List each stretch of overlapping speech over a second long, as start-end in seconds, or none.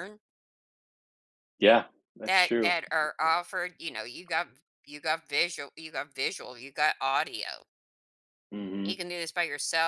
none